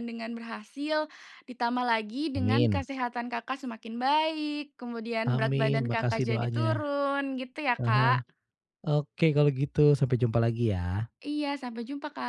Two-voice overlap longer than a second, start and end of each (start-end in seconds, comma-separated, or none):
5.3-6.7